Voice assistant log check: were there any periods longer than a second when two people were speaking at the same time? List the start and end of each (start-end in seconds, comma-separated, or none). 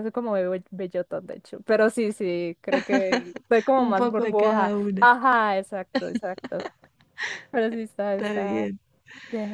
3.8-5.1